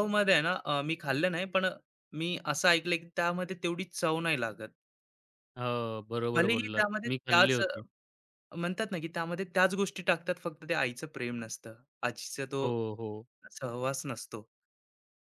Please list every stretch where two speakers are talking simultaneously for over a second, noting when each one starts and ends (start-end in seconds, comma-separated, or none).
6.3-7.8